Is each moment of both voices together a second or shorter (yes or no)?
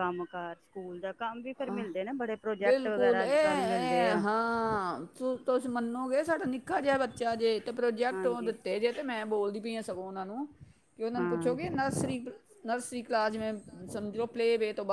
no